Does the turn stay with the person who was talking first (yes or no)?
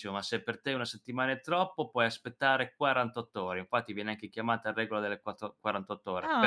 no